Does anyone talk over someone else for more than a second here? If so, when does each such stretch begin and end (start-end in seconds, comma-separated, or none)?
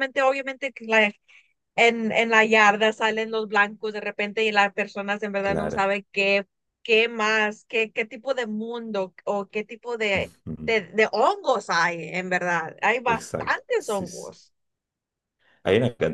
13.0-14.4